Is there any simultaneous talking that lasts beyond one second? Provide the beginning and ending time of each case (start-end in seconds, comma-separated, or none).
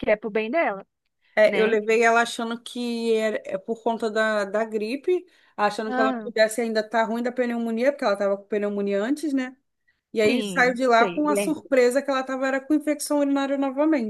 10.2-11.7